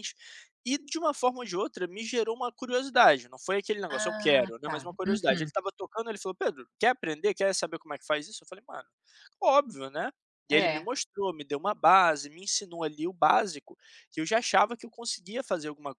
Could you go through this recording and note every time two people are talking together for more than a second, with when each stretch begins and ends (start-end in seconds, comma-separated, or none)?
3.9-5.5